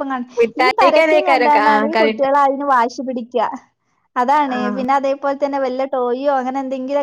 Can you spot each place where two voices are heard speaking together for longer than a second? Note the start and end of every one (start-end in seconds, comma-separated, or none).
0.6-2.3